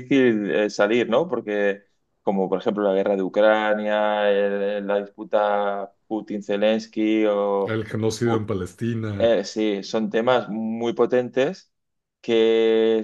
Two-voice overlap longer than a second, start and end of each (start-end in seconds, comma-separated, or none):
none